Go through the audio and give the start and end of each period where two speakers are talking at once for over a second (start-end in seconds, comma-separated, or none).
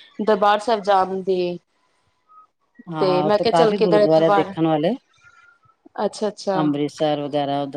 3.0-4.5